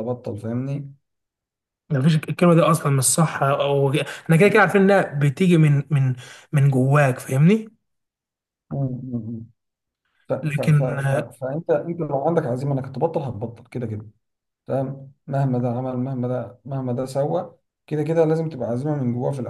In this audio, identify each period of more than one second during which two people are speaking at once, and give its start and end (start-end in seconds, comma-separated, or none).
none